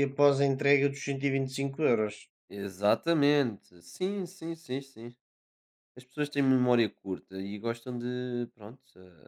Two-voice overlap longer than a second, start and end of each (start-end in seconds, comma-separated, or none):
none